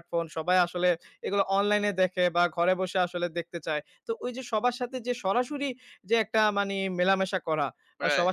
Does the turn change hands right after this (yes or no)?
no